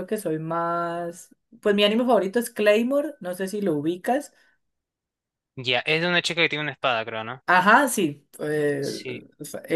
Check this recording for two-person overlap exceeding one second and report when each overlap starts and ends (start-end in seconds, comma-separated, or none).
none